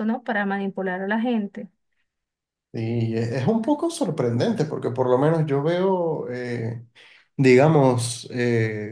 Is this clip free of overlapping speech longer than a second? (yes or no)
yes